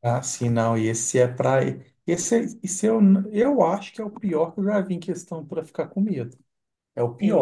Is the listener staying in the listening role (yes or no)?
yes